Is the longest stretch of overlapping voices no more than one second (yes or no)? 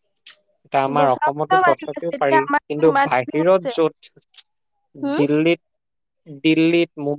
no